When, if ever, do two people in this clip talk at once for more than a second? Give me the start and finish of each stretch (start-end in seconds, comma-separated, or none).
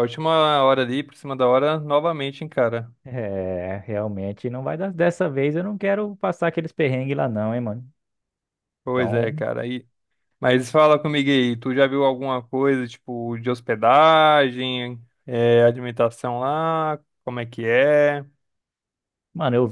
none